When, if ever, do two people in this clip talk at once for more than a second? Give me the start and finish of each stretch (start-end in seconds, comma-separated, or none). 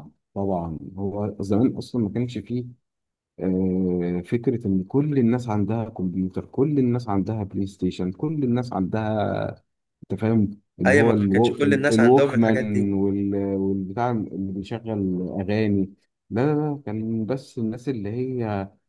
10.9-12.9